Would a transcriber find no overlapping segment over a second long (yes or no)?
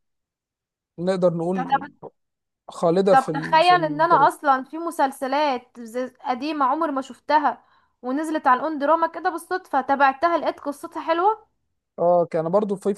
no